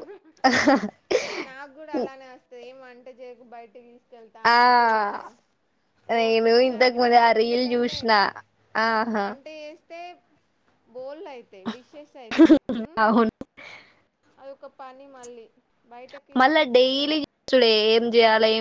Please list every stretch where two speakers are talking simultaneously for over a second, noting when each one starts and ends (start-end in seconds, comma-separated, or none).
6.2-8.0